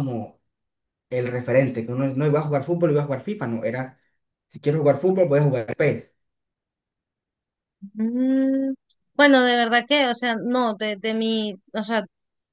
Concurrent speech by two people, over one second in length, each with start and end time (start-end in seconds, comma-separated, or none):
none